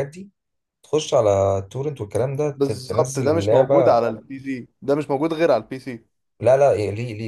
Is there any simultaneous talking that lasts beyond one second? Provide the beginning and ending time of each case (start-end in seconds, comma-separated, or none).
2.5-4.0